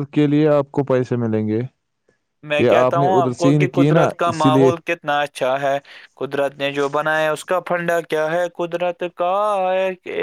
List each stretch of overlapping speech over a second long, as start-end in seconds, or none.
2.6-4.7